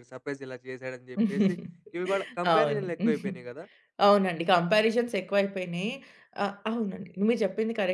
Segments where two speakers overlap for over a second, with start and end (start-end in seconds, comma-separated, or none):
none